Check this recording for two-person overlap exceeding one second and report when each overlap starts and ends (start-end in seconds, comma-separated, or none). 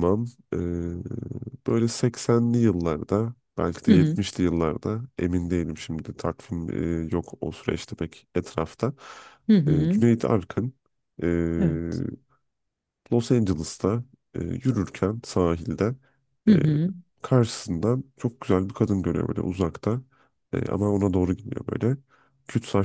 none